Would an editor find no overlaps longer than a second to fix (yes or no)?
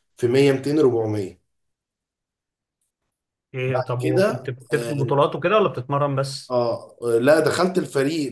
no